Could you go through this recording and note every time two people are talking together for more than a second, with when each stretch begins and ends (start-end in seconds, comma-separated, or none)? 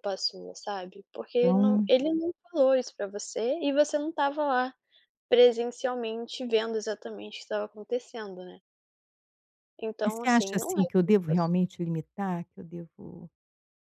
10.0-11.5